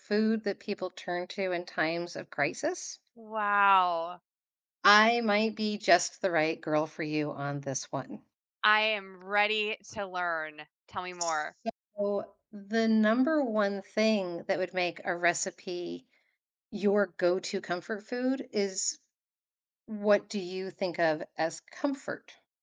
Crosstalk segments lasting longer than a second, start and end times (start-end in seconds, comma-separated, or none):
none